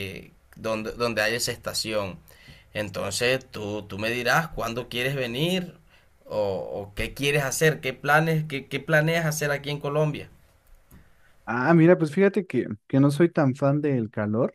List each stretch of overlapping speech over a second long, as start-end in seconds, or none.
none